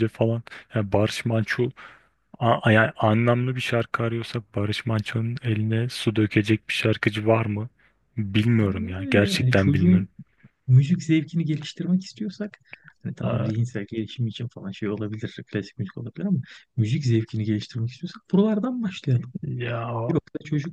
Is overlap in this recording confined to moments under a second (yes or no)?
no